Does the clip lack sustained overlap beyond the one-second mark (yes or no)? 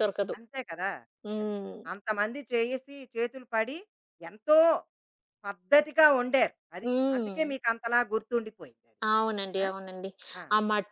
yes